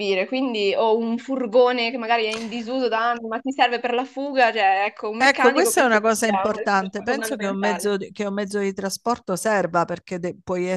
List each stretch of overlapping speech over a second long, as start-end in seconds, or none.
5.2-7.9